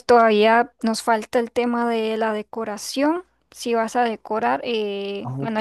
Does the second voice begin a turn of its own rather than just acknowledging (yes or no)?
no